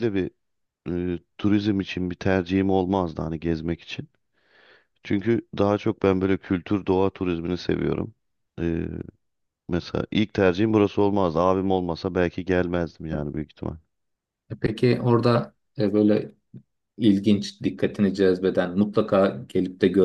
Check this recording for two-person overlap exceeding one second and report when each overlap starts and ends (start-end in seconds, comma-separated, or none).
none